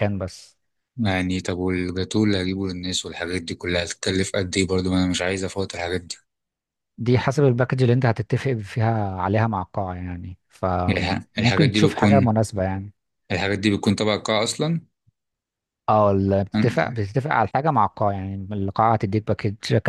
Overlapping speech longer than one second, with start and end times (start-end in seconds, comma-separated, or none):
10.9-12.3